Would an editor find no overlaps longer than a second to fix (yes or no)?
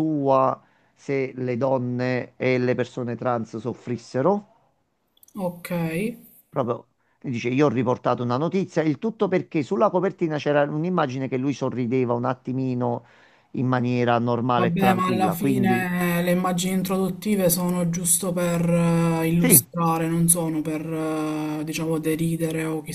no